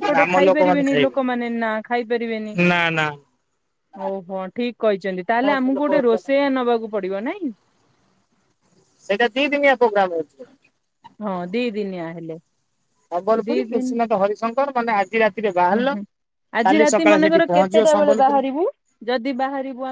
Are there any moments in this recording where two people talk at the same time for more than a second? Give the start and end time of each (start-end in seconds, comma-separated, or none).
16.7-18.4